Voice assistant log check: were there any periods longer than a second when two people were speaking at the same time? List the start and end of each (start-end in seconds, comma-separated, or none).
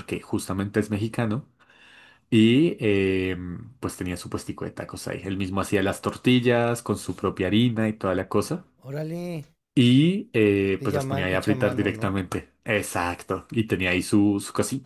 10.6-12.2